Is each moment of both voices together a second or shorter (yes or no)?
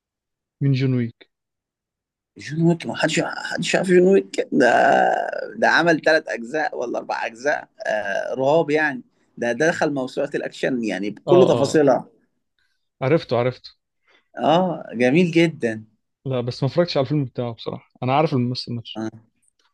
yes